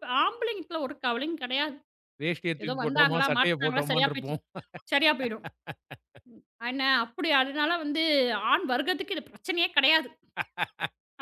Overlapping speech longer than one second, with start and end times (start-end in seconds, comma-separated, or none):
2.6-4.4